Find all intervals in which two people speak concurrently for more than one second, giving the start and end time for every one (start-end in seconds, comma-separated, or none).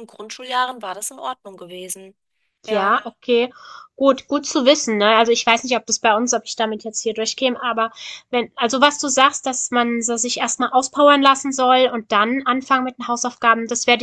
none